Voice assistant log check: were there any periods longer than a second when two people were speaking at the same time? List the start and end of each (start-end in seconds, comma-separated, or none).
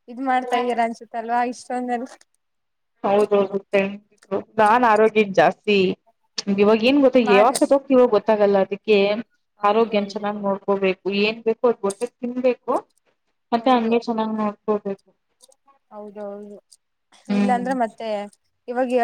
none